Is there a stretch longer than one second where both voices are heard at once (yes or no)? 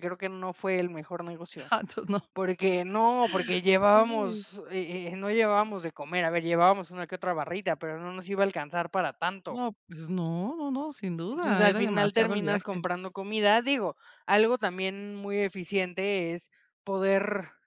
yes